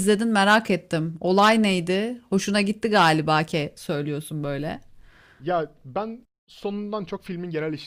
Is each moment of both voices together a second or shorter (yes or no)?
yes